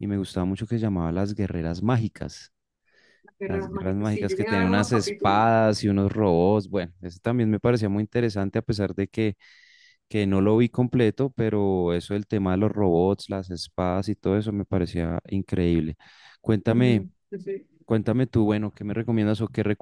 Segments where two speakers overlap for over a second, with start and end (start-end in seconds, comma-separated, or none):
3.4-5.4